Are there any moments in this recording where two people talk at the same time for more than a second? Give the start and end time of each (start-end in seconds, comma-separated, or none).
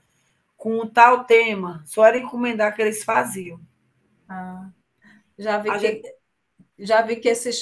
none